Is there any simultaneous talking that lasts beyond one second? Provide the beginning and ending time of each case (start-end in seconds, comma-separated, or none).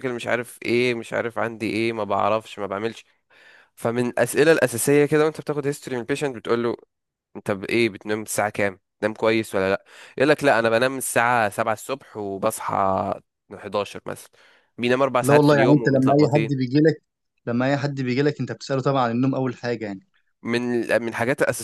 15.2-16.6